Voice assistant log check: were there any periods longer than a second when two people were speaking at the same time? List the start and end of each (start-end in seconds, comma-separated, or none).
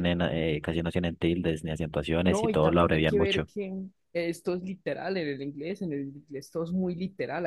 2.2-3.5